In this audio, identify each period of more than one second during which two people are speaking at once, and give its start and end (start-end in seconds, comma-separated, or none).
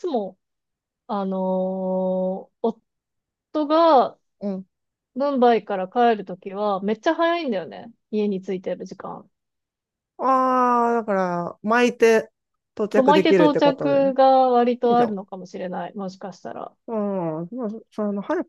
12.9-14.1